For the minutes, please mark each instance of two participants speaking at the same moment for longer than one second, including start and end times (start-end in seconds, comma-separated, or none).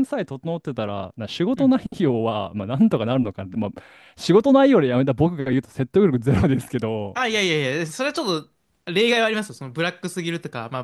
none